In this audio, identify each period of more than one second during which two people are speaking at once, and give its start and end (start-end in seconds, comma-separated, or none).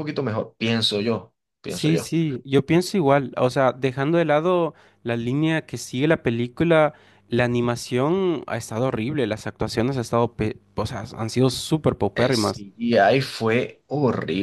none